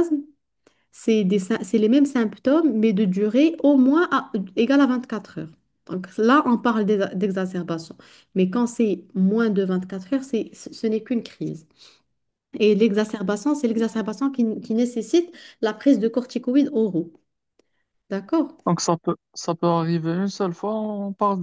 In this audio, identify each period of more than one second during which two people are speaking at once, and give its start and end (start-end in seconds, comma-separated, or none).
none